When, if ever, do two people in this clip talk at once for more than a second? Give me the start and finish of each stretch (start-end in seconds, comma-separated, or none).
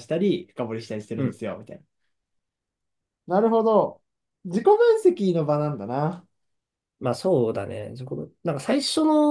none